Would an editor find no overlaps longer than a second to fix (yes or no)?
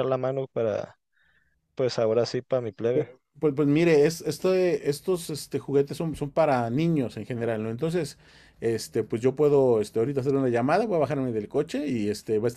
yes